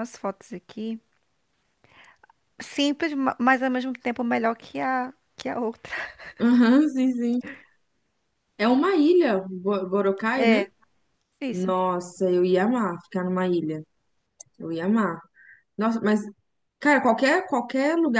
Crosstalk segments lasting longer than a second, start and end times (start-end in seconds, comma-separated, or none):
none